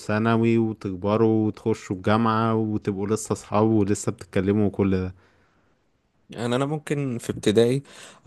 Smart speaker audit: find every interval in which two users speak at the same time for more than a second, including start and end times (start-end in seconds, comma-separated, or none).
none